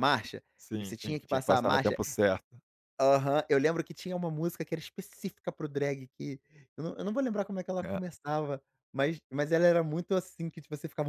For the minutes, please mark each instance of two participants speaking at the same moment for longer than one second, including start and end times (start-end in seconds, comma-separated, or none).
0.6-2.0